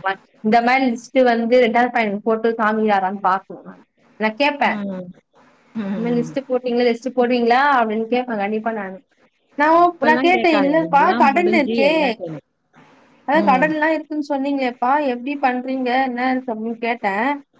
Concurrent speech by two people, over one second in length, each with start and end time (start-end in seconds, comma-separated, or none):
9.9-11.9